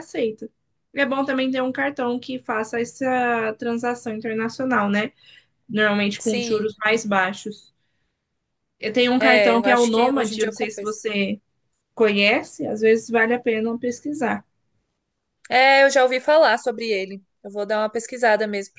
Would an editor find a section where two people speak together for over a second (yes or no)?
yes